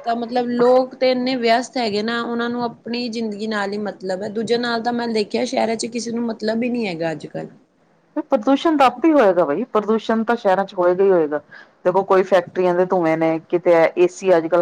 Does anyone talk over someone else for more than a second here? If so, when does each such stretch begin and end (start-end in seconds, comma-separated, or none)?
none